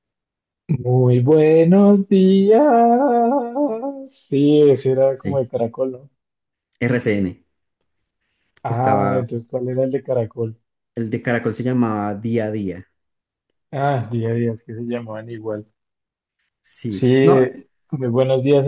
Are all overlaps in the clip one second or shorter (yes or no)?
yes